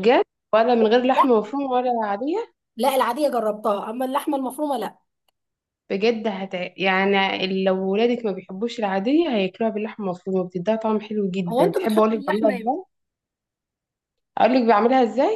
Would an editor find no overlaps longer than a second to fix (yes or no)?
no